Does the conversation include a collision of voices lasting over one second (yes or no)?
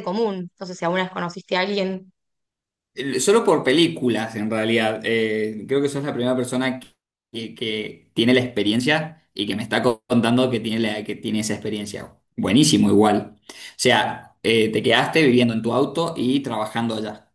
no